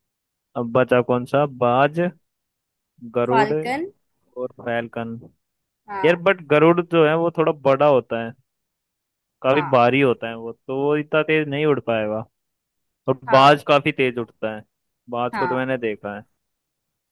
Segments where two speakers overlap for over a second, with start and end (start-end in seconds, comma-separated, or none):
none